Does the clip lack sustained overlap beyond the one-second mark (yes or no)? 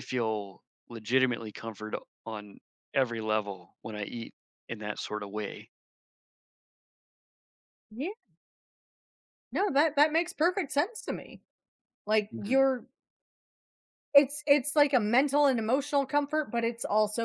yes